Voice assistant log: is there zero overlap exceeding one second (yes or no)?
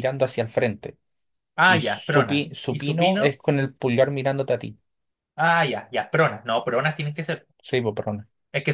no